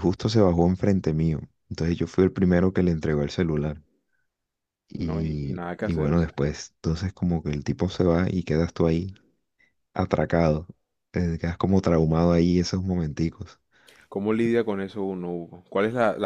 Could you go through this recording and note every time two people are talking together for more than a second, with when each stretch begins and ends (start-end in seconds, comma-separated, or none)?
4.9-6.4